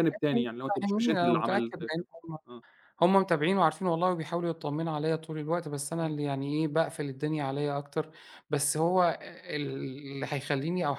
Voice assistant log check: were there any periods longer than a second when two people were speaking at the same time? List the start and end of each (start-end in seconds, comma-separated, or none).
0.8-2.1